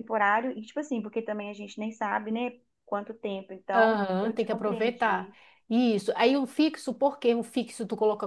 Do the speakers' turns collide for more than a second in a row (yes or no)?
yes